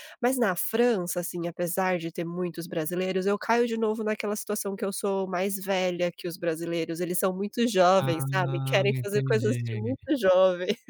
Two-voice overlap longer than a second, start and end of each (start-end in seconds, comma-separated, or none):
7.9-10.1